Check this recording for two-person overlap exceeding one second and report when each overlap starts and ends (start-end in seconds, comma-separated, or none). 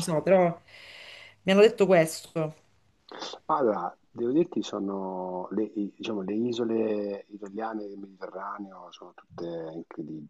none